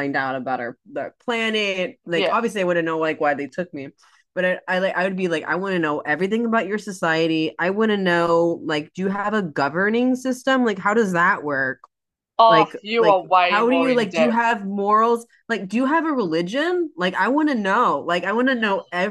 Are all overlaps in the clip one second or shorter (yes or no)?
no